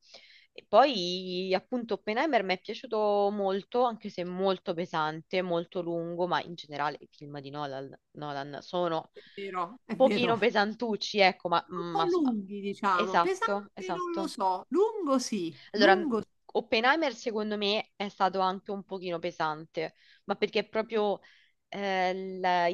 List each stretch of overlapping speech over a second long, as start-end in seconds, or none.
9.1-10.3, 12.9-14.3